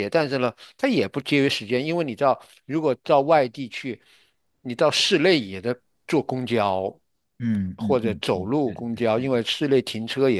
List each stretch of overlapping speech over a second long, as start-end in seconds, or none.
7.8-9.4